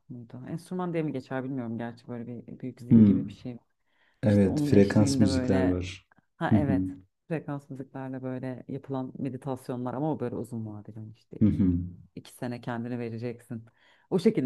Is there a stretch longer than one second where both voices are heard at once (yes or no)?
yes